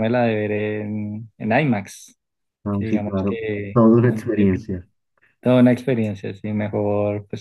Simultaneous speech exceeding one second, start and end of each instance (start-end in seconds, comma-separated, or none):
2.7-4.7